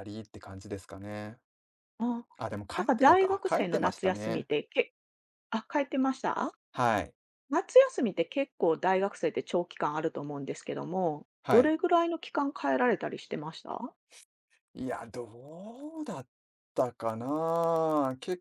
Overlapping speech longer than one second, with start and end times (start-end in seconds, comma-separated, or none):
2.8-4.5